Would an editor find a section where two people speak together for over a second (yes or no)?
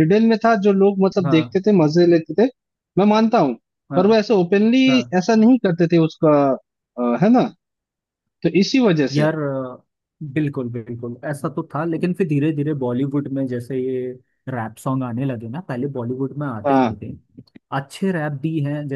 no